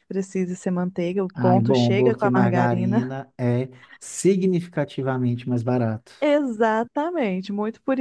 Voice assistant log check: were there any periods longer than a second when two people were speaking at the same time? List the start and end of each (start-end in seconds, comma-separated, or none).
1.4-3.1